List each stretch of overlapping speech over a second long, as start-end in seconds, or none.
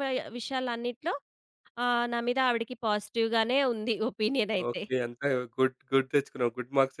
none